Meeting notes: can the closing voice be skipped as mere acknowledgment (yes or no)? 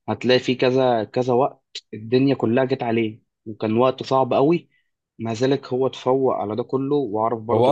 no